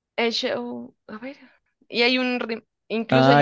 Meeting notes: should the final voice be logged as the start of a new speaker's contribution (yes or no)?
yes